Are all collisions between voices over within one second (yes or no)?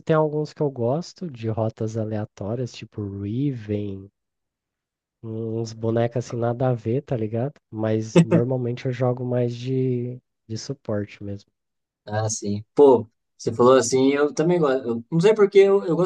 yes